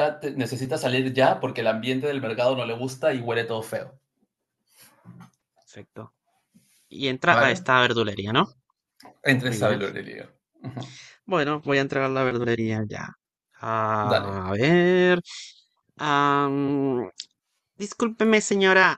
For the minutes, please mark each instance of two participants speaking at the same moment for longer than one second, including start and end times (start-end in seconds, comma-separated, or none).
none